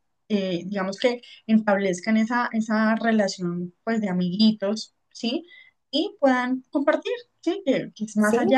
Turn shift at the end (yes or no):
no